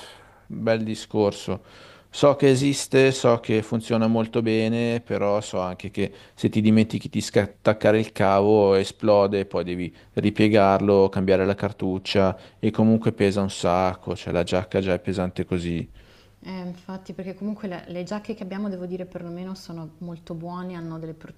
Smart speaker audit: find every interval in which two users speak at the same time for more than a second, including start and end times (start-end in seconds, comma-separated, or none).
none